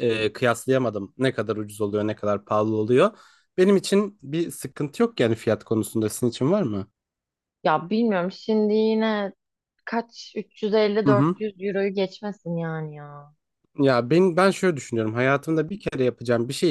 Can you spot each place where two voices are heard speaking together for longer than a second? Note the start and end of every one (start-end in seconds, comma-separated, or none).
none